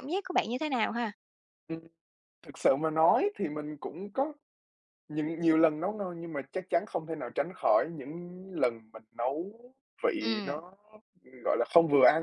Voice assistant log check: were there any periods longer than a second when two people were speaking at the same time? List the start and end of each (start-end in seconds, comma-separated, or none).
none